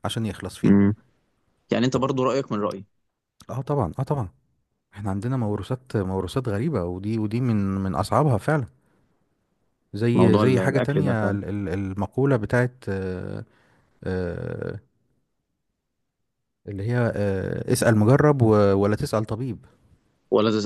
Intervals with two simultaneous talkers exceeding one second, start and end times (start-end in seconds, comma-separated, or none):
10.1-11.4